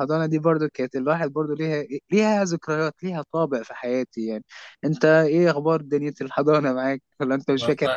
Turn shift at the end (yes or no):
yes